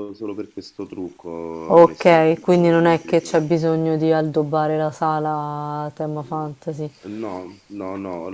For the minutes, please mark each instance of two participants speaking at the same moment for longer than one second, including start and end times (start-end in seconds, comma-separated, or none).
1.7-3.4